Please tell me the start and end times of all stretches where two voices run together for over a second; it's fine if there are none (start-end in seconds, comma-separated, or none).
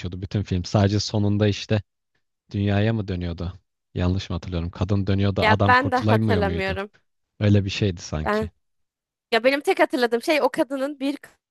5.4-6.8